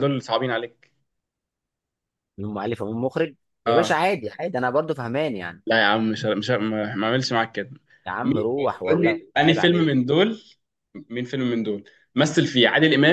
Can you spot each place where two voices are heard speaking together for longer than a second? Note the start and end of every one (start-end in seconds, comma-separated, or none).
8.2-10.0